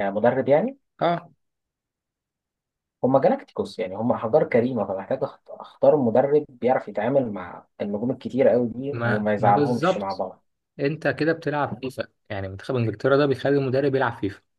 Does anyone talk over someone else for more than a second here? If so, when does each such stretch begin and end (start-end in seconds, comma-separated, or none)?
8.9-10.2